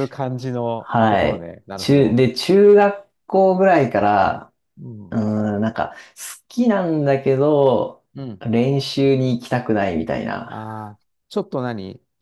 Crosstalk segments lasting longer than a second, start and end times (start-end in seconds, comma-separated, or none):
0.8-2.2